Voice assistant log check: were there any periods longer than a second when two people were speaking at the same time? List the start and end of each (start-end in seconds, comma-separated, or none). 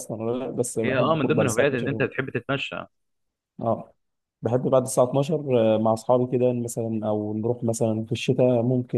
0.8-2.0